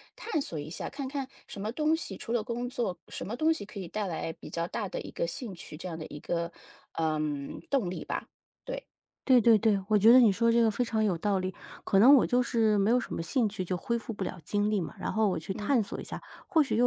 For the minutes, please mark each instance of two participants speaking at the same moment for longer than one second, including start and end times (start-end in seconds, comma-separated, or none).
none